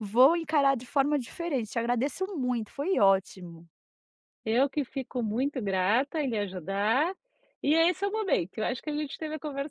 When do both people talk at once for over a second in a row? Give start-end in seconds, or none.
none